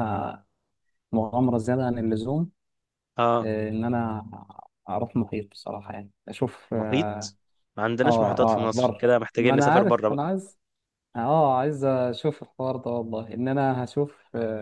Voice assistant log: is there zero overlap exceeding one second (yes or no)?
no